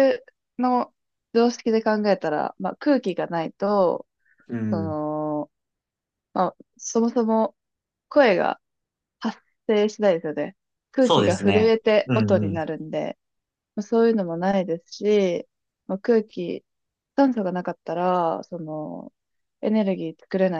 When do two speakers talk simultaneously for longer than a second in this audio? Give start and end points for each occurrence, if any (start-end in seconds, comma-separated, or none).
11.0-12.6